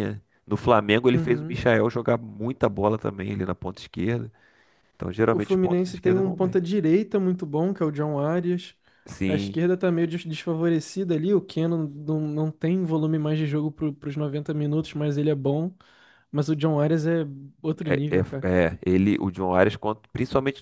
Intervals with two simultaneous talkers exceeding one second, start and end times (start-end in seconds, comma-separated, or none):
5.3-6.5